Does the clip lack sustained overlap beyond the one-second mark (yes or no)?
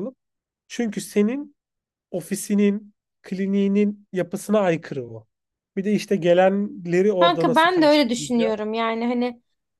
no